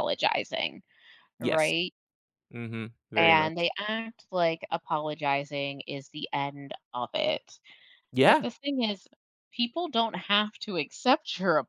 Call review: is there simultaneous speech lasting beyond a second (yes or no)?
no